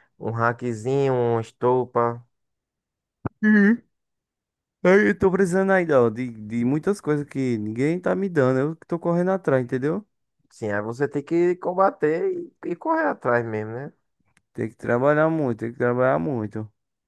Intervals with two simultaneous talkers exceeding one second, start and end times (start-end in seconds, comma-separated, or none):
none